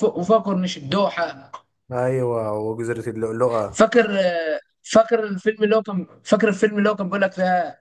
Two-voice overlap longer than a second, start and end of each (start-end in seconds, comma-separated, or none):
none